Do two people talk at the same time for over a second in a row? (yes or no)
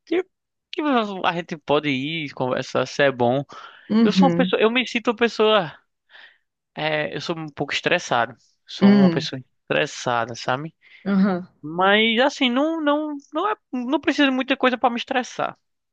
no